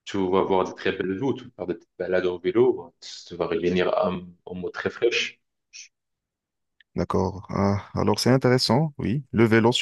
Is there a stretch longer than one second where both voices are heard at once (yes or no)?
no